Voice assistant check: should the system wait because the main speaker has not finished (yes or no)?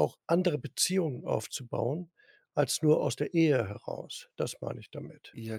no